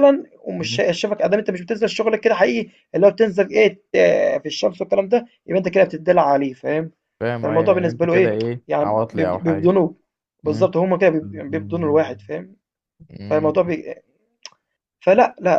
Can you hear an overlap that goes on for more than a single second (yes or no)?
yes